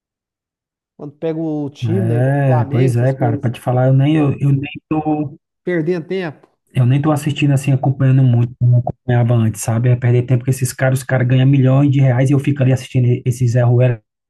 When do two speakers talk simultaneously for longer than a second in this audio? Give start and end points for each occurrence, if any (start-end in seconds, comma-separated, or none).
1.8-3.5